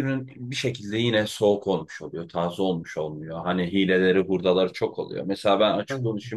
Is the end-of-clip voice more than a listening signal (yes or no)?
no